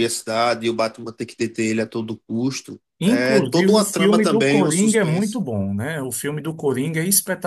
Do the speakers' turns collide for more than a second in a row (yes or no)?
yes